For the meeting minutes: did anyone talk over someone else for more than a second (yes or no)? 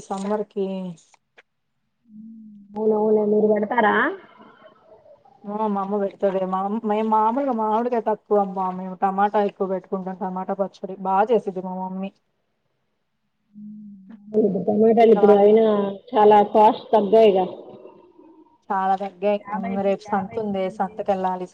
no